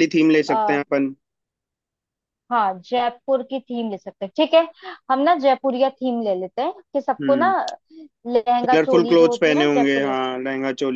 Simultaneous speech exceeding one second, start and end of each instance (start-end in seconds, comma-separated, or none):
8.6-10.1